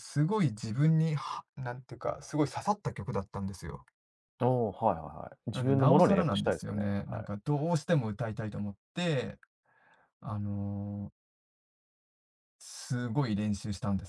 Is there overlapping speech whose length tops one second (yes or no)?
yes